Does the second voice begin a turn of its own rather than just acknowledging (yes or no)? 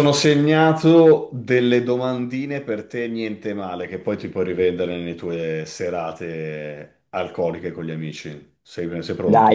yes